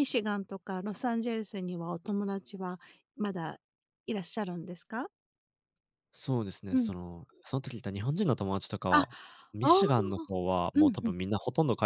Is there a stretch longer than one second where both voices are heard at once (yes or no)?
yes